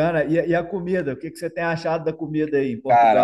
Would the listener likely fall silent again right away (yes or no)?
no